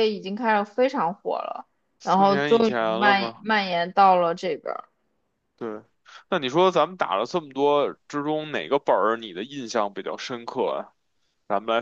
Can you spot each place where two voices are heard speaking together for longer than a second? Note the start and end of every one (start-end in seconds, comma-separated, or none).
2.0-3.4